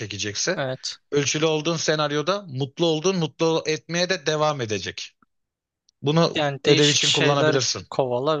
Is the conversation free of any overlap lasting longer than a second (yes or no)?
no